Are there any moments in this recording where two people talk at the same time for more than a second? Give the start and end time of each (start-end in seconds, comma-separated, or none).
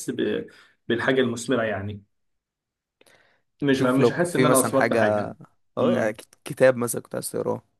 3.7-5.0